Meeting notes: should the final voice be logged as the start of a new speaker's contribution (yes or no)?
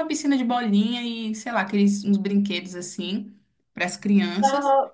yes